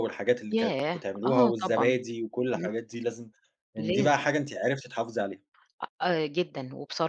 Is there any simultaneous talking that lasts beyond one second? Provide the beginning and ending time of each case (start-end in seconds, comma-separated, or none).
0.5-1.9